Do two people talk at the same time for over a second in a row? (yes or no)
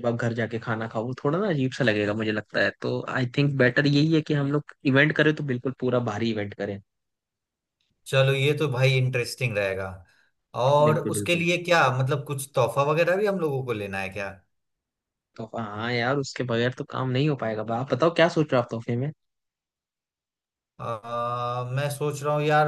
no